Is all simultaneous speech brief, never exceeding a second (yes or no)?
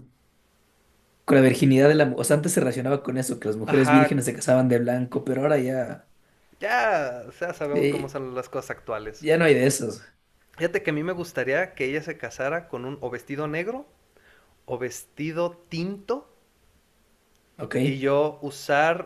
yes